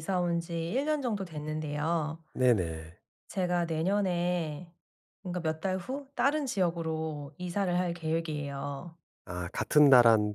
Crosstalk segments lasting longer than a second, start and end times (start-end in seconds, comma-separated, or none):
none